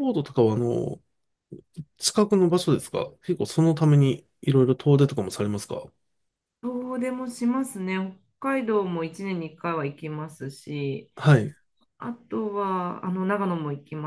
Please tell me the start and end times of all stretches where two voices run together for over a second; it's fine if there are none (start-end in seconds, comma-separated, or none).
none